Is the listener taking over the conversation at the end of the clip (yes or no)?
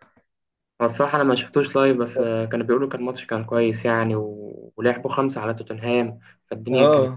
yes